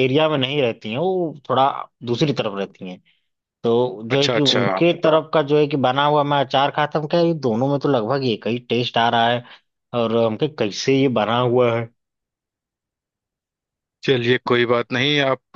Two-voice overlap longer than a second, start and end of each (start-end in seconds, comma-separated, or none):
none